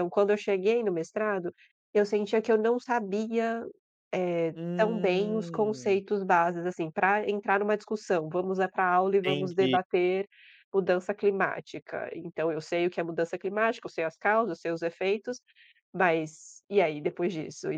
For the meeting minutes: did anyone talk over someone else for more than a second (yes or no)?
yes